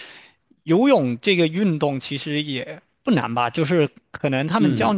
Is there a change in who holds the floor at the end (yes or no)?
no